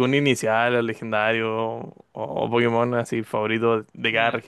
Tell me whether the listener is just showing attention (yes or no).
no